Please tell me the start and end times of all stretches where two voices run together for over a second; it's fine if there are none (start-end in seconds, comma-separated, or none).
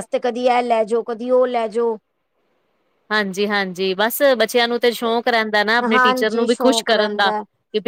5.9-7.3